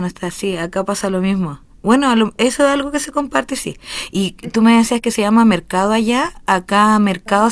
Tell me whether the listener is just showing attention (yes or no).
yes